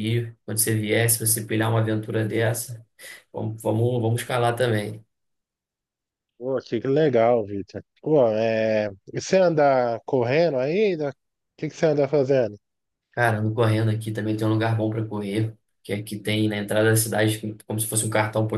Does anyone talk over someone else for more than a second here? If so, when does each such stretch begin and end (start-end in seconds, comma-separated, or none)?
none